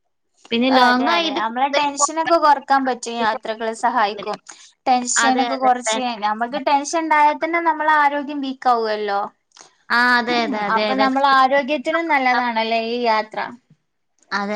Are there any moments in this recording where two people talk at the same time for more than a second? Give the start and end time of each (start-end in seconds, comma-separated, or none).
0.8-2.4